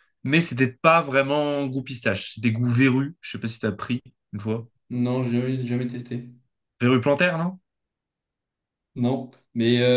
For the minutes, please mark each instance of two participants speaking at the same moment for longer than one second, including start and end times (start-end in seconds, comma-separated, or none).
none